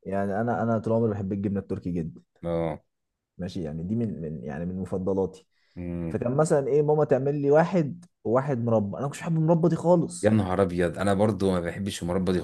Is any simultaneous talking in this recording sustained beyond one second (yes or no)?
no